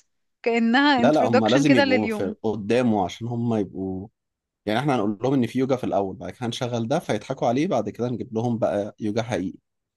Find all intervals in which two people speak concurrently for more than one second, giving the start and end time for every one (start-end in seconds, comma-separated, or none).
1.0-2.4